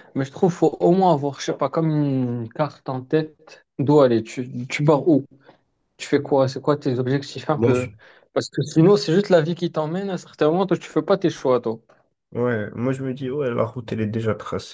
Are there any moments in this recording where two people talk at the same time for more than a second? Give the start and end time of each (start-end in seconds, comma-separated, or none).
none